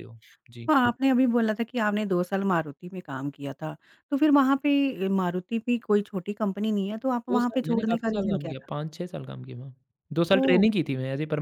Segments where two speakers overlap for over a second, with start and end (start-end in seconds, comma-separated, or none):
7.3-8.7